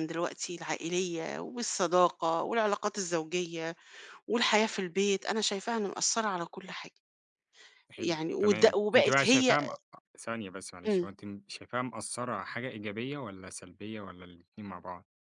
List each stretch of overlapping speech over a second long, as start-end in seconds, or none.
8.0-9.6